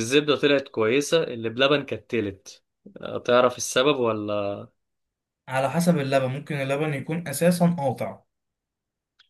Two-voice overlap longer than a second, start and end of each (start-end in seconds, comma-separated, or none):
none